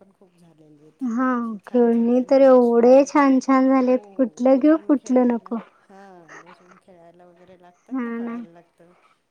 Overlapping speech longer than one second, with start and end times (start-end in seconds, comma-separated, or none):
1.2-3.1, 3.8-5.5